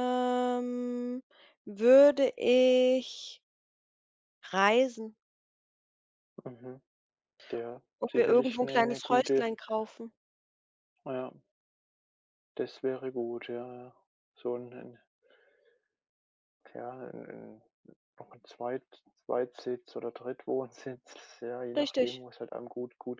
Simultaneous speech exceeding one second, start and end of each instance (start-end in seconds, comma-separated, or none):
8.0-9.5